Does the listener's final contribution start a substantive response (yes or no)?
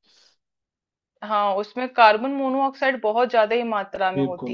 no